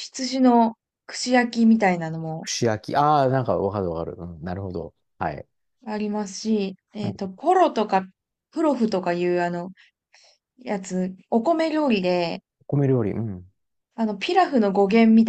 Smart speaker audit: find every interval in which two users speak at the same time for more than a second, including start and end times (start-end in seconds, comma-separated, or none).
none